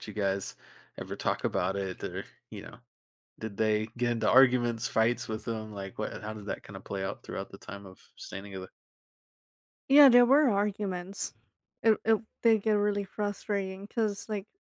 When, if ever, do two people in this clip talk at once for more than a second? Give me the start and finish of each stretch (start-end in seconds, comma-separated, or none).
none